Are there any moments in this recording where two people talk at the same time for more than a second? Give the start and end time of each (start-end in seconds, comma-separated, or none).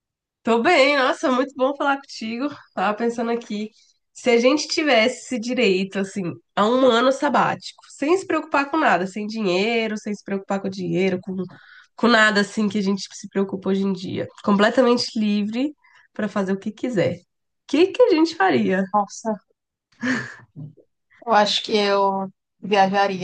none